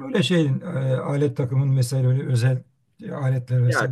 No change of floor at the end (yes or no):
no